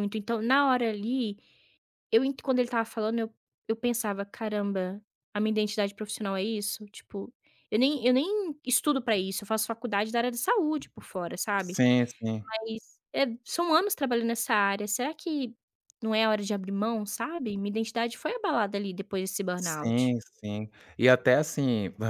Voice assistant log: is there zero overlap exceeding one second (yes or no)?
yes